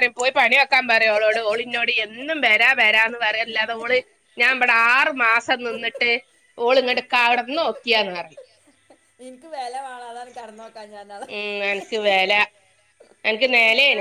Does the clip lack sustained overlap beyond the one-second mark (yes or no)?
yes